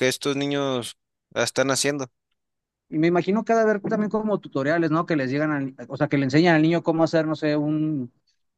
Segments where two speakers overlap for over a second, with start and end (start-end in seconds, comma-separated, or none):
none